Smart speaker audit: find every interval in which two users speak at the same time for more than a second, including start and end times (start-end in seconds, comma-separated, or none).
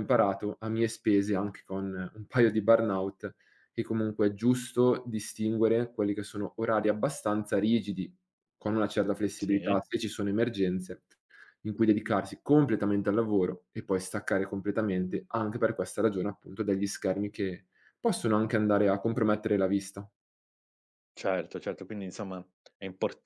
none